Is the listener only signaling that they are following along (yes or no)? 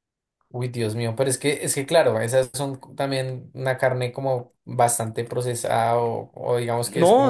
no